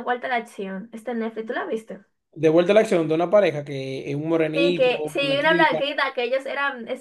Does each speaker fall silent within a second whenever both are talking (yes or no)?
no